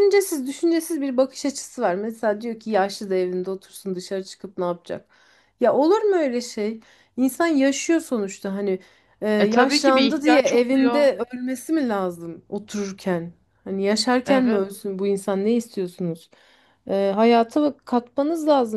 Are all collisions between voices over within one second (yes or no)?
no